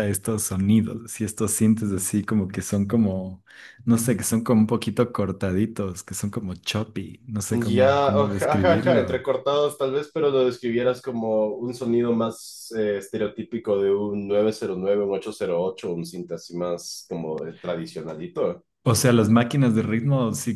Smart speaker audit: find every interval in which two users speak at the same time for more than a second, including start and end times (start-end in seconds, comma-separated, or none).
7.5-9.2